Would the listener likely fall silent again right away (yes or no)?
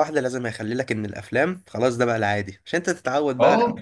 yes